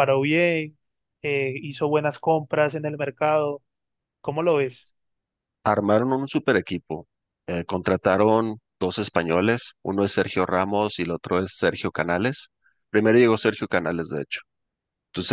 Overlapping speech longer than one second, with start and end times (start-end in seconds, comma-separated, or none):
none